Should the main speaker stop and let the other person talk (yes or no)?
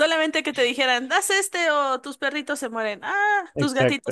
yes